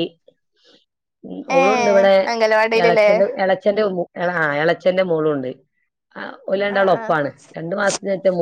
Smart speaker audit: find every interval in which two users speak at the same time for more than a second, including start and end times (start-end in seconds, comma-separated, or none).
none